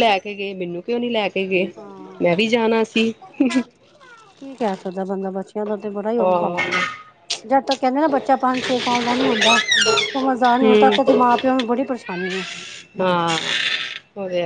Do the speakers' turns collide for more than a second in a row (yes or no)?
no